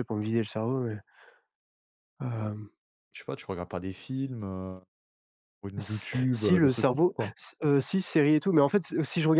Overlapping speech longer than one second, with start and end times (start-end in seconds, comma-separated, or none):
5.8-7.3